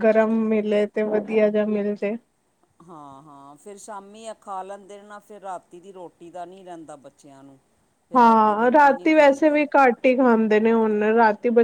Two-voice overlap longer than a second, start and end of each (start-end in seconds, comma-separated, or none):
8.2-9.6